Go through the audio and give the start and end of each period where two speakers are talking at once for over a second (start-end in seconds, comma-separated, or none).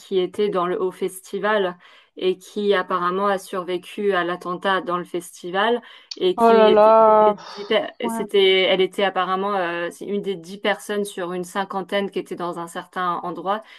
6.3-8.2